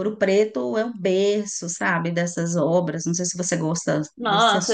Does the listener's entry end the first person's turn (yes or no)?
yes